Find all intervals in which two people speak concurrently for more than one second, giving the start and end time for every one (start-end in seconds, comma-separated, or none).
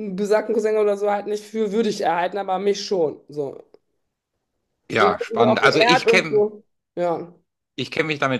5.0-6.4